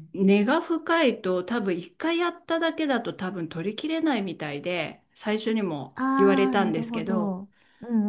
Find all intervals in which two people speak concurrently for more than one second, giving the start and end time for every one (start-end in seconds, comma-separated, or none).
6.0-7.4